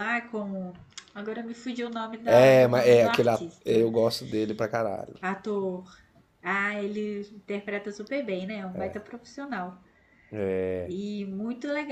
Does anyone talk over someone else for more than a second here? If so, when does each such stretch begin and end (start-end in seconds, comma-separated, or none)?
2.3-3.9